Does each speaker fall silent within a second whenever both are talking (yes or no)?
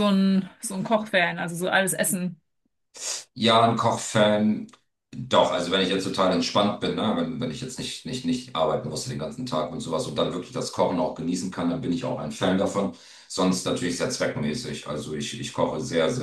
yes